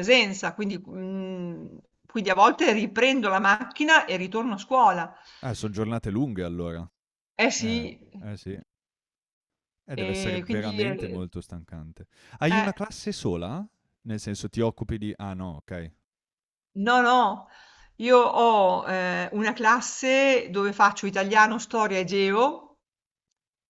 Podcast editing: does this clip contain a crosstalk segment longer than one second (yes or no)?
yes